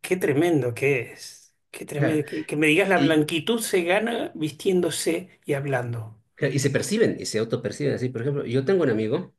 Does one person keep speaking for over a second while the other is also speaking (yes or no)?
no